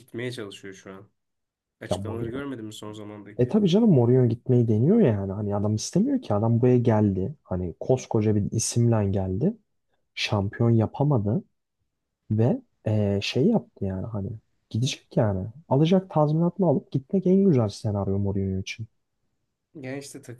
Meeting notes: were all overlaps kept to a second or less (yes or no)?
yes